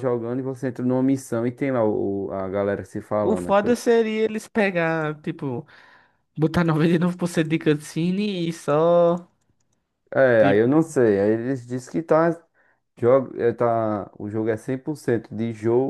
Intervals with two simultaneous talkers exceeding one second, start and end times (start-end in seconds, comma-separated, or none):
none